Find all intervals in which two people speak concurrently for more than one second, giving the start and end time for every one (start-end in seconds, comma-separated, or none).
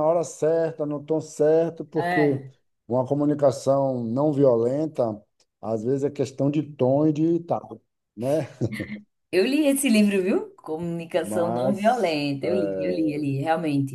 11.2-13.2